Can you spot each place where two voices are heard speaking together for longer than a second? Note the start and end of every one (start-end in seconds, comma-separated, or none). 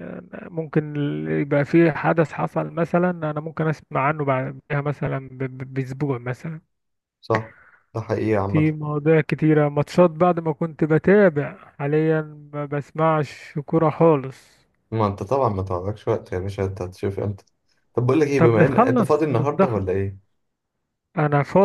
18.4-19.9